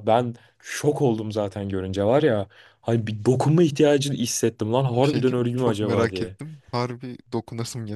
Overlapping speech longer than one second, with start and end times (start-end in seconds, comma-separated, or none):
4.9-6.4